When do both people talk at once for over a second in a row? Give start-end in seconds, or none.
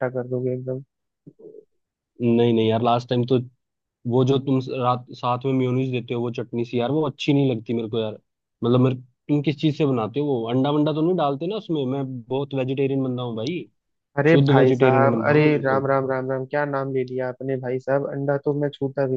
14.3-15.9